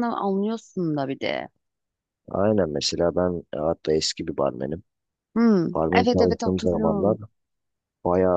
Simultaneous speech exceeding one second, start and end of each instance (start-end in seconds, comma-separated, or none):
5.7-7.2